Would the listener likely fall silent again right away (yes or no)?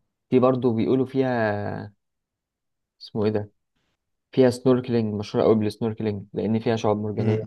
no